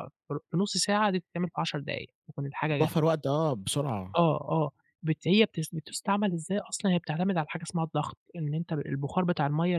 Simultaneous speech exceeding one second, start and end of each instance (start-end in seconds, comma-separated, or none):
none